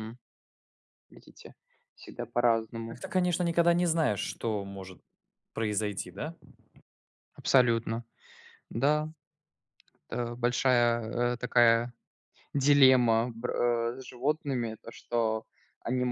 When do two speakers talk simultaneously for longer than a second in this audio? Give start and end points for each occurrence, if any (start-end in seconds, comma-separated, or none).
none